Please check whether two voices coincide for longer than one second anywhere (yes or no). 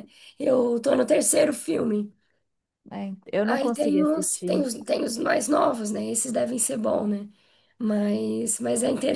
yes